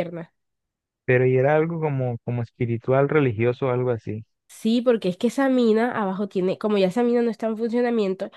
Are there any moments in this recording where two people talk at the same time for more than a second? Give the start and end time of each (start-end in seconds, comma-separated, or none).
none